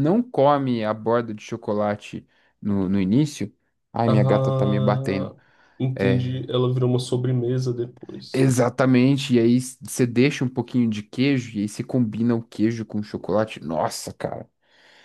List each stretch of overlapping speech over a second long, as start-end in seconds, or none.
4.0-5.3